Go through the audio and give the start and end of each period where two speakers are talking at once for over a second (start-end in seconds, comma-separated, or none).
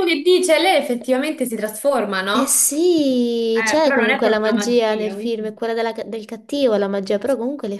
3.5-5.5